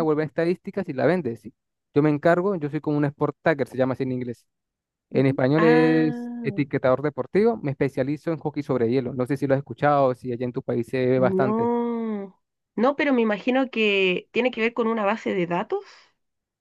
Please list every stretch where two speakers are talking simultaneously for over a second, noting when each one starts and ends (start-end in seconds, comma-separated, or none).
5.1-6.6